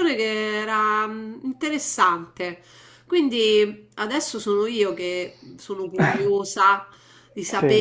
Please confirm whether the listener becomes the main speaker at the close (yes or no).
no